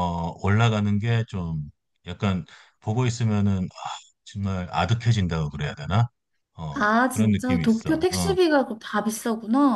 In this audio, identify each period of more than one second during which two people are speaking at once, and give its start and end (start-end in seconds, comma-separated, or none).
6.8-8.3